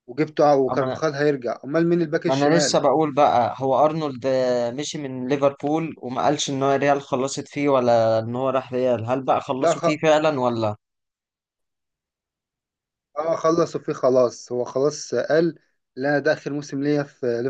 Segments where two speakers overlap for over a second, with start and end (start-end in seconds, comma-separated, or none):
none